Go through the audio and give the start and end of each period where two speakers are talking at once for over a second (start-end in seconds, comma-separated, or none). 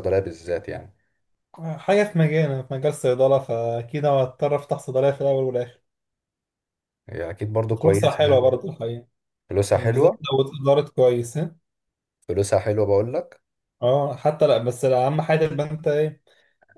none